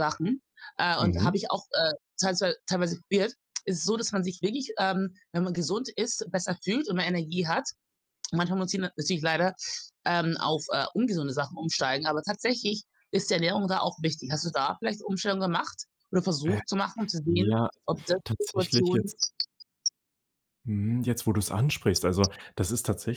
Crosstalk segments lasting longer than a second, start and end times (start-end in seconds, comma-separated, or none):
17.2-19.1